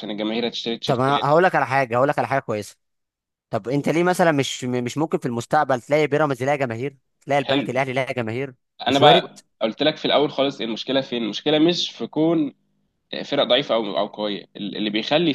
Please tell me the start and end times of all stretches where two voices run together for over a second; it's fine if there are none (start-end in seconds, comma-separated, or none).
none